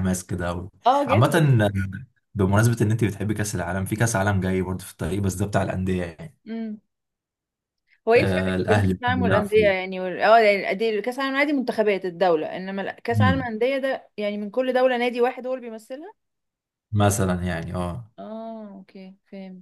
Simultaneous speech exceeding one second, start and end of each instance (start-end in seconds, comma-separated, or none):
8.2-9.9